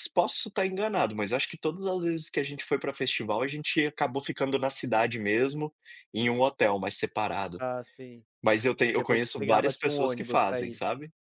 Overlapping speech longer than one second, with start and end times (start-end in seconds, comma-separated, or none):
8.9-10.8